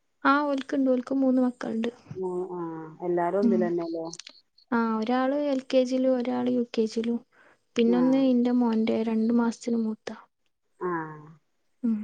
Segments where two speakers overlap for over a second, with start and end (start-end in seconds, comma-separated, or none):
none